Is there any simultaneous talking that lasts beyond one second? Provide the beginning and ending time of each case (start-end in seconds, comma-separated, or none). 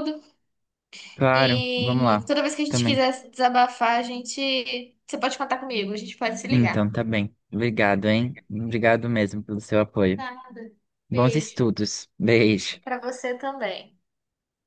1.3-3.0